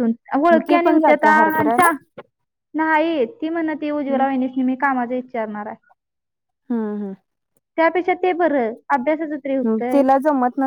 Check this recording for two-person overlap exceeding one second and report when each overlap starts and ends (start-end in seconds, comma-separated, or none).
0.5-1.9